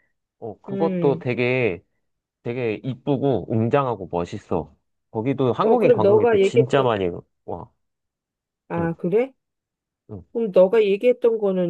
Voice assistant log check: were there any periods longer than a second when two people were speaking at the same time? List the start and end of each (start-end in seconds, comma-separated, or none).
5.6-6.9